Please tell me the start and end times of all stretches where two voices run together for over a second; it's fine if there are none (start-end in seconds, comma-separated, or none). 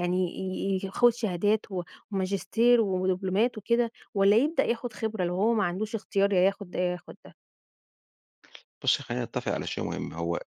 none